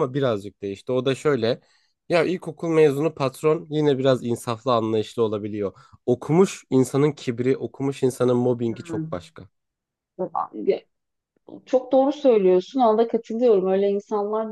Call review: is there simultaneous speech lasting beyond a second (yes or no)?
no